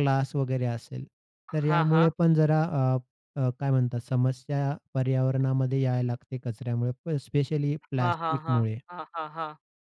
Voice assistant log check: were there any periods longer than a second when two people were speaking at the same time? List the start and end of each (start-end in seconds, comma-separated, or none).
none